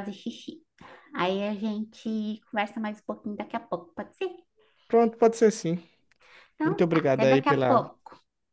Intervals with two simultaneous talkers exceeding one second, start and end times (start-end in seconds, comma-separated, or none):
6.6-7.9